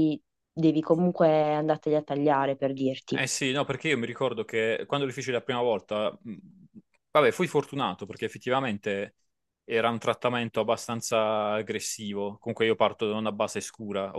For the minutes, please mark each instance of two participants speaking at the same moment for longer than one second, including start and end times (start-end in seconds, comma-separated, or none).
none